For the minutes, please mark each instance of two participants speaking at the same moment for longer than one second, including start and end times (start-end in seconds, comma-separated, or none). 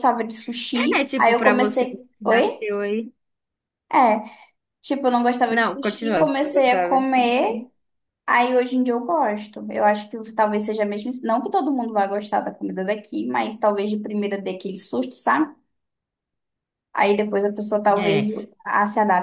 1.0-2.6, 5.5-7.2